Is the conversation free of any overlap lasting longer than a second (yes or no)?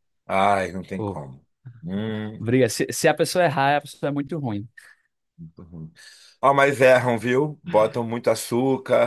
yes